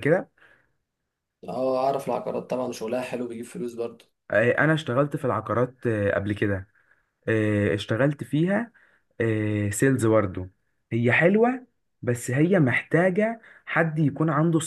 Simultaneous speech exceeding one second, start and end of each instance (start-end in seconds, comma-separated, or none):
none